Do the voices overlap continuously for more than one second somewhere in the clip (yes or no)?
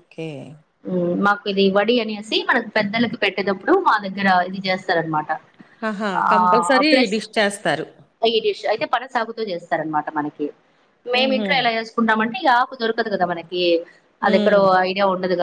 no